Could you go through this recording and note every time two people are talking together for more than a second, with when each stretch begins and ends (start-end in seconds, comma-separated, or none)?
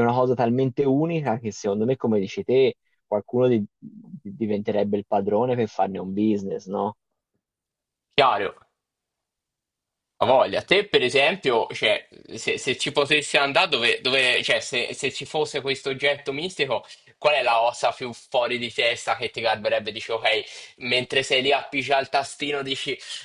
none